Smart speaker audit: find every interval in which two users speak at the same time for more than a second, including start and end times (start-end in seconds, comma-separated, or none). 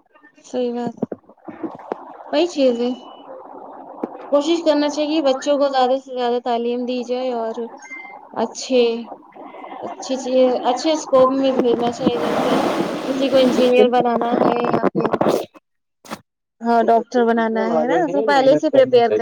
16.8-18.7